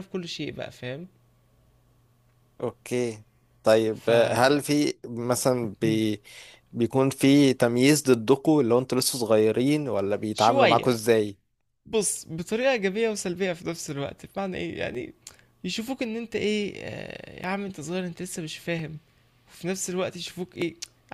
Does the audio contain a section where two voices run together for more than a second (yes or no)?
no